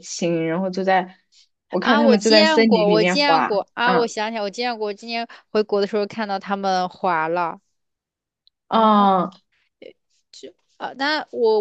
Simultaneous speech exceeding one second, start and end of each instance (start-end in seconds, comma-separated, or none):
1.8-4.1